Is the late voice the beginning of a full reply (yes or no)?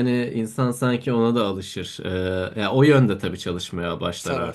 no